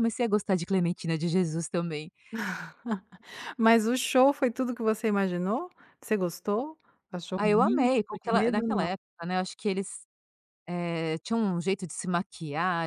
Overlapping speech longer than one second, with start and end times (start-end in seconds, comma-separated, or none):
7.4-8.9